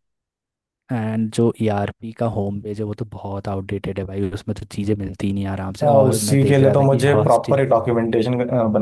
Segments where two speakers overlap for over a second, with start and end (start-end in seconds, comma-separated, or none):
5.8-7.6